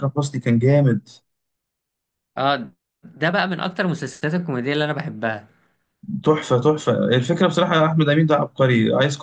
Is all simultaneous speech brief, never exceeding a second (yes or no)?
yes